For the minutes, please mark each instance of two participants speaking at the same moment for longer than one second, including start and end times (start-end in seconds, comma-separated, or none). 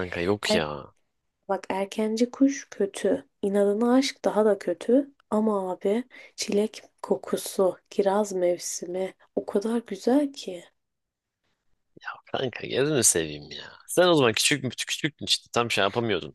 none